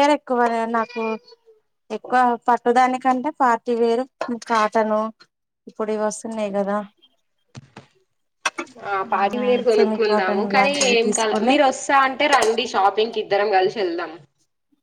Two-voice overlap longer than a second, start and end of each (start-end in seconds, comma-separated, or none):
9.7-11.5